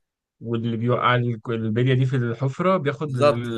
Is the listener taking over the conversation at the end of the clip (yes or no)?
yes